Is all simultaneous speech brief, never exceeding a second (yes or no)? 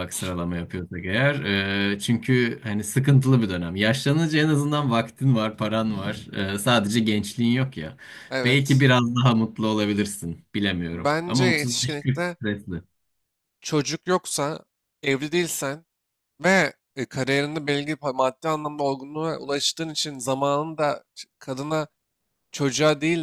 no